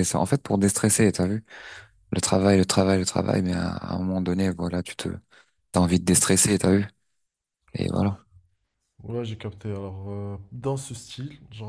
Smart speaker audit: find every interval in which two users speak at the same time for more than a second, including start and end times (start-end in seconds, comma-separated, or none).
none